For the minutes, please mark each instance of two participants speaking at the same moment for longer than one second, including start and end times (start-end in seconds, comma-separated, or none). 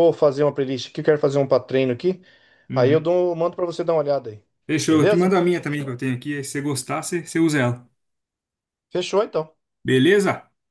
none